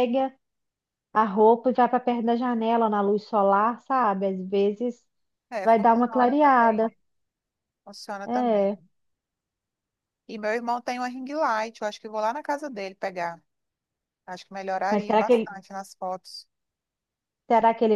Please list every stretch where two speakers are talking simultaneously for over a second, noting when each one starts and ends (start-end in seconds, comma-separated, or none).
5.6-6.9